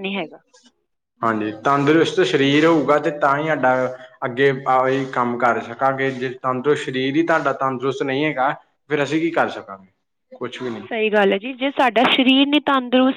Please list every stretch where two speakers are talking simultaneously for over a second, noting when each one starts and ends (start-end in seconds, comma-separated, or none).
none